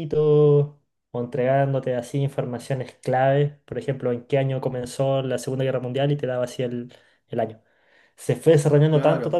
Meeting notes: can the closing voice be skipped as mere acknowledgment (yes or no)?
yes